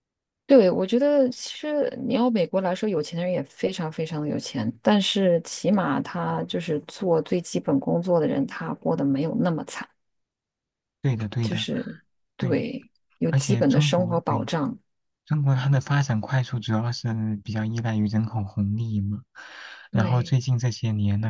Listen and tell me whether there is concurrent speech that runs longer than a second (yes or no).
yes